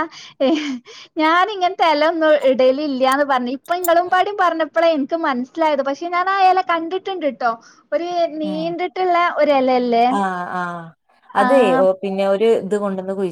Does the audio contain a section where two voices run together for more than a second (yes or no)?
no